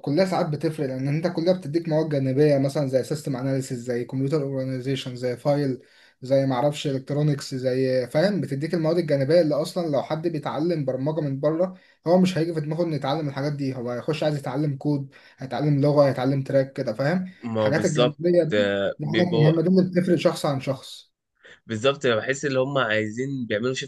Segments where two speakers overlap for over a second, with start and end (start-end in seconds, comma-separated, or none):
17.4-19.5